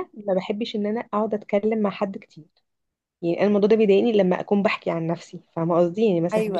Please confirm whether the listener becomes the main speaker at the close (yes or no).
no